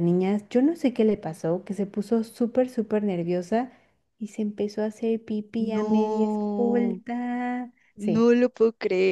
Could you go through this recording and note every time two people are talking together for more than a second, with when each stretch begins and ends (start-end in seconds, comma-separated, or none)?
5.6-7.0